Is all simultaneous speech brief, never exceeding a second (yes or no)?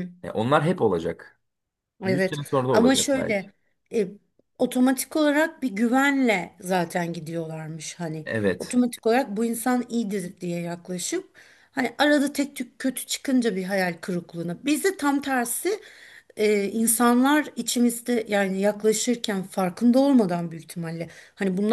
no